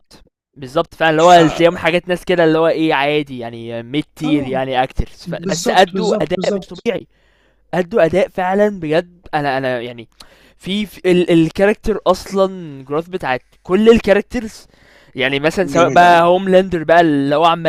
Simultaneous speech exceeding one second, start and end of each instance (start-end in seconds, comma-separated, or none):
5.4-6.9